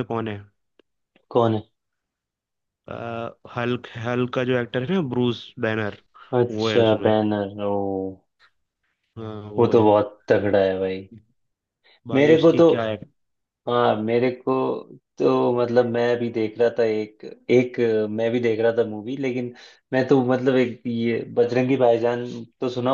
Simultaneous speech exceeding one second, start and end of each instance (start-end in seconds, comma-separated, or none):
none